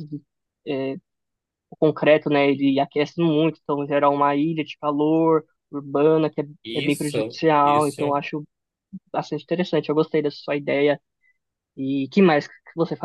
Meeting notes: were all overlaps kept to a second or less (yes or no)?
no